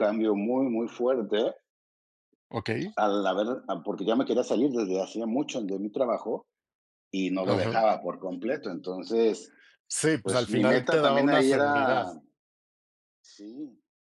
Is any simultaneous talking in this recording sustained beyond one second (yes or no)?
yes